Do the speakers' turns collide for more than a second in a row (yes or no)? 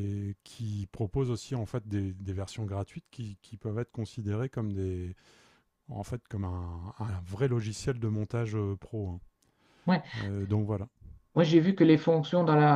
no